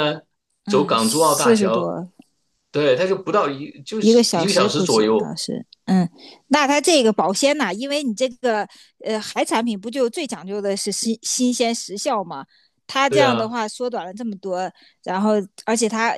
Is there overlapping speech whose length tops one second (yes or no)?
yes